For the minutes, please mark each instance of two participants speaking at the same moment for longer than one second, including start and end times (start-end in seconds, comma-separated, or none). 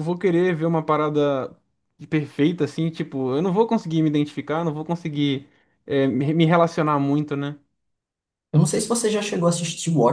none